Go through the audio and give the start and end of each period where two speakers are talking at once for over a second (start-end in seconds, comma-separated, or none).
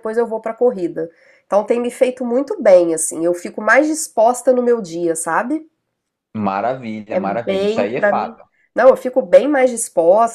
7.1-8.4